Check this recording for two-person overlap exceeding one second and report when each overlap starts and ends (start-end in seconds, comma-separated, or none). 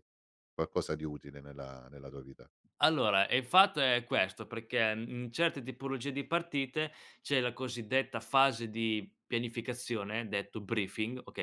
none